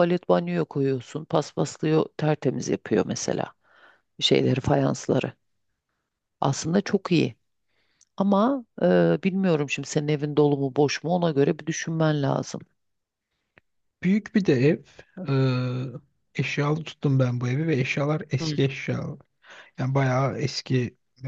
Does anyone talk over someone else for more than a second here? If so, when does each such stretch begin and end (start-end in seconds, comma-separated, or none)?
none